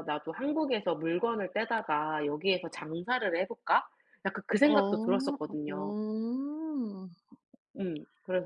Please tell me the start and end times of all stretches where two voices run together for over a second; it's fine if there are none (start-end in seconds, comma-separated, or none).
4.6-6.0